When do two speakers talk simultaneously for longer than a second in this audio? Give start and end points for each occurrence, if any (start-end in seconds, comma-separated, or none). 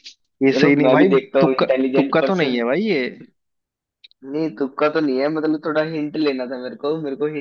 0.5-2.7